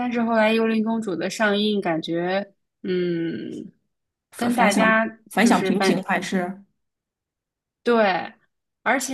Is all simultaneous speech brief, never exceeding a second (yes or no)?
no